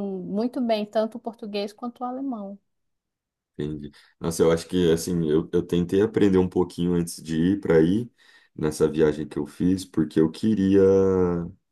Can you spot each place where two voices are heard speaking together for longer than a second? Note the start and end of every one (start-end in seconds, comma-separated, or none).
none